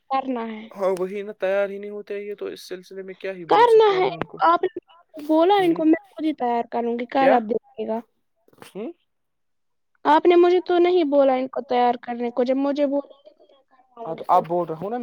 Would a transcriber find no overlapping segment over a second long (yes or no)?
yes